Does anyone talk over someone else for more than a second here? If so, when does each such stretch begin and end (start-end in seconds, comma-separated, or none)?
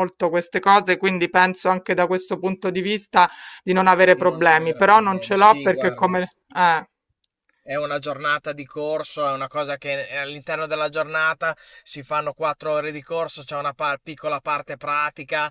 4.1-6.2